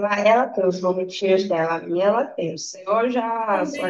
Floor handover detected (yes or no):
yes